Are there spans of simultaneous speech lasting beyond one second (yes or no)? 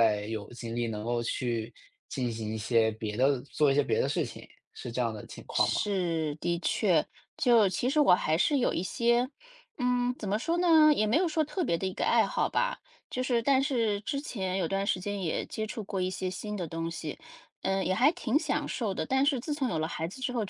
no